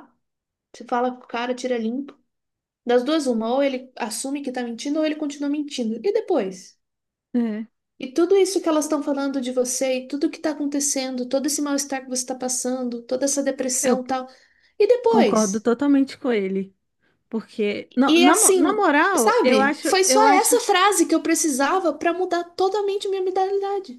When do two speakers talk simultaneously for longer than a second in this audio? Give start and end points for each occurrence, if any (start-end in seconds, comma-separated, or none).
18.1-20.6